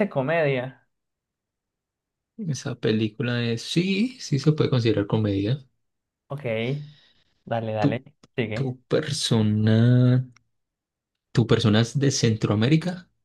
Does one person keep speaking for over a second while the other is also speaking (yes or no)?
no